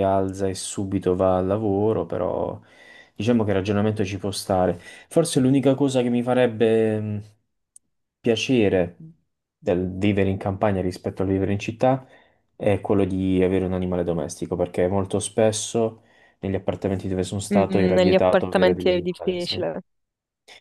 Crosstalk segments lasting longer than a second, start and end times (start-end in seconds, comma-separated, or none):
17.5-19.6